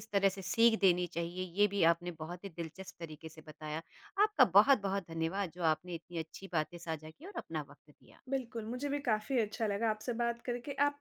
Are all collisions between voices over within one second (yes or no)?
yes